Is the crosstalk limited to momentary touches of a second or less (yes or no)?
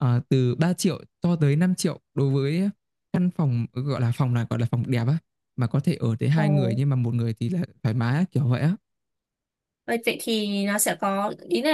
yes